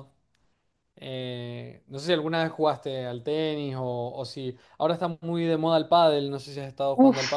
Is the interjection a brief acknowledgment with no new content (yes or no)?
no